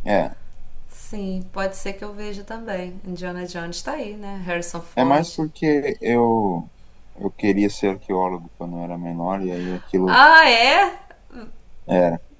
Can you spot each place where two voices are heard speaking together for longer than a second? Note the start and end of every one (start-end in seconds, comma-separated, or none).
none